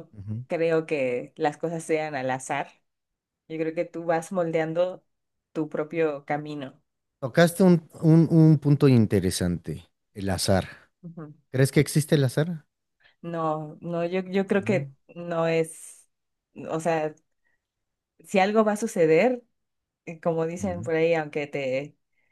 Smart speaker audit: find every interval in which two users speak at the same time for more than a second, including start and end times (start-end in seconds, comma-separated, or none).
none